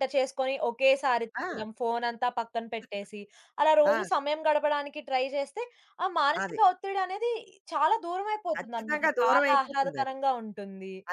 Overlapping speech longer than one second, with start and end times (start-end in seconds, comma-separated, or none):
8.6-10.1